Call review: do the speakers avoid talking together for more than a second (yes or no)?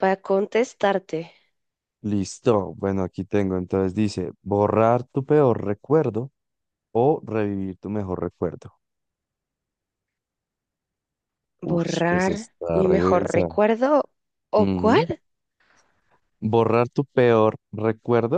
no